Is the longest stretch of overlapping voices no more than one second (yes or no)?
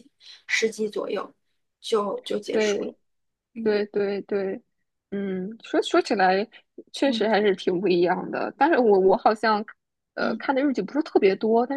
yes